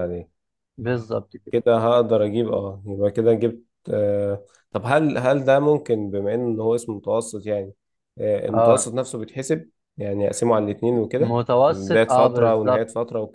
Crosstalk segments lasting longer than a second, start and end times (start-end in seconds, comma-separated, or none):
11.2-12.8